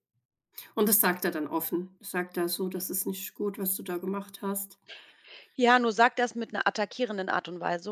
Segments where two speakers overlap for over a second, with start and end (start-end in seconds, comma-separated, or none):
none